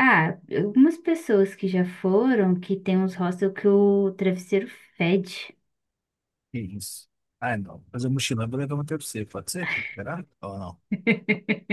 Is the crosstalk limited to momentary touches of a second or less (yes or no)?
yes